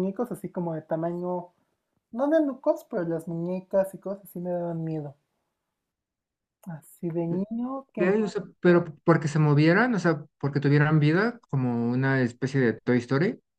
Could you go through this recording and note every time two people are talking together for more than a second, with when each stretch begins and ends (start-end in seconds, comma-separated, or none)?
none